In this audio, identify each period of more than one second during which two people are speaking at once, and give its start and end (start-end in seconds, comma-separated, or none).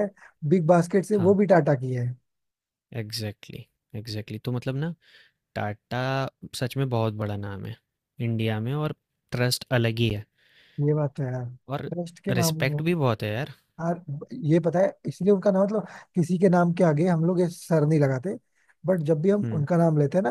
none